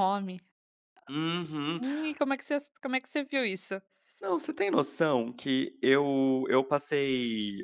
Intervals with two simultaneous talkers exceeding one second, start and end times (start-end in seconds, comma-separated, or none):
none